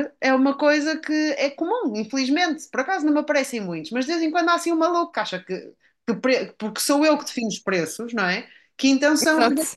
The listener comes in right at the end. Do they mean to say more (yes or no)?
no